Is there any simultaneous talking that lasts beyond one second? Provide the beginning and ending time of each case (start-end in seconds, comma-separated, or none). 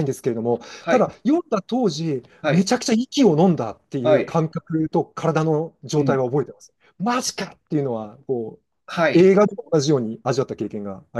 none